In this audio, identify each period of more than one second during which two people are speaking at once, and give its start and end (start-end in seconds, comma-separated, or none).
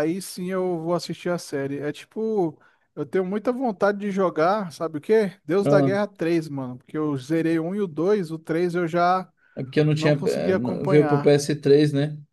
9.9-11.3